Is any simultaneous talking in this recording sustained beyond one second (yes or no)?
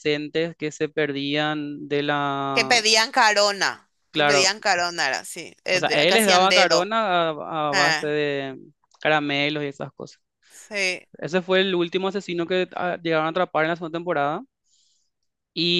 yes